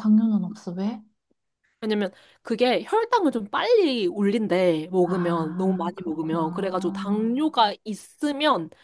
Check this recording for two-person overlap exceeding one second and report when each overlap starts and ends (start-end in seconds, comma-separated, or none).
5.0-7.3